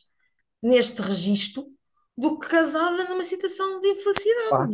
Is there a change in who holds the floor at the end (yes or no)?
no